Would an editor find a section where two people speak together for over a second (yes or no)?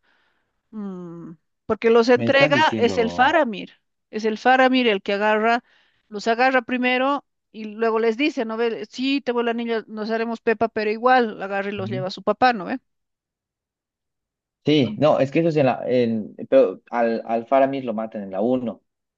yes